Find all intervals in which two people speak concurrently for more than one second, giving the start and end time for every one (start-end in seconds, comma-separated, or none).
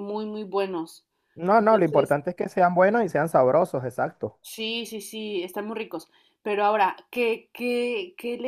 none